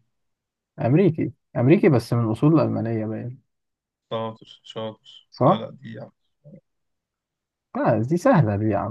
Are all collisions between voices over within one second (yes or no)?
yes